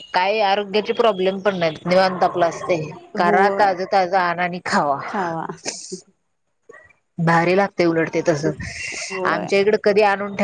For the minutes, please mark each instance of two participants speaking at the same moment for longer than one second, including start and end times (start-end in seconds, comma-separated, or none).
none